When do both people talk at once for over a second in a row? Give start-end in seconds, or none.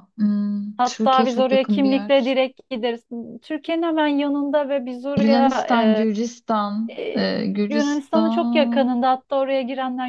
0.8-2.4, 6.9-8.9